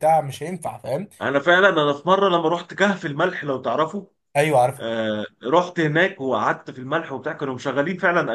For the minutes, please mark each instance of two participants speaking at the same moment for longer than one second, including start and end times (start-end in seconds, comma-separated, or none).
none